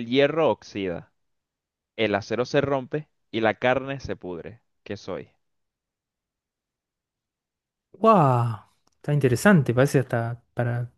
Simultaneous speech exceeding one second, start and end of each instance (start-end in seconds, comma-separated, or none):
none